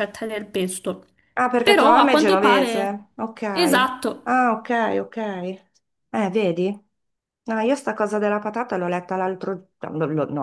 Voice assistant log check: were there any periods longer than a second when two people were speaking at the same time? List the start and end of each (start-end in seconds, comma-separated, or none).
1.6-3.0